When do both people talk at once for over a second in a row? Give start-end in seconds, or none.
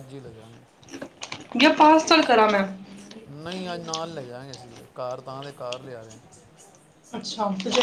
none